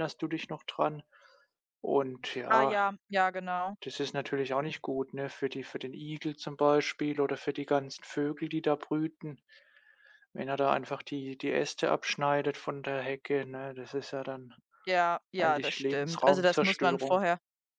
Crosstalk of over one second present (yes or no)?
yes